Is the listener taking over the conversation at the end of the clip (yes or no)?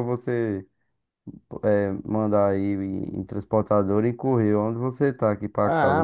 yes